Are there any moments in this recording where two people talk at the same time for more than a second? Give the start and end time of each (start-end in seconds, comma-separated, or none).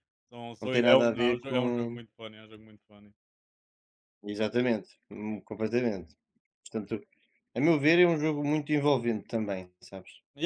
0.6-2.0